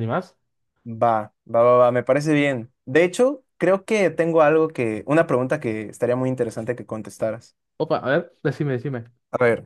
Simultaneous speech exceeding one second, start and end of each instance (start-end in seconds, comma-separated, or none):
none